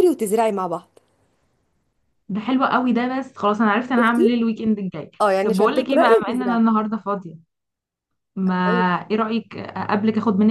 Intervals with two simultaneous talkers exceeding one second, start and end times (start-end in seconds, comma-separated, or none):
5.2-6.6